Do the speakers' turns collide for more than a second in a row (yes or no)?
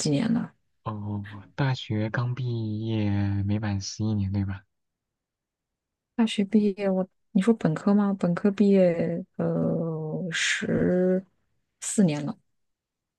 no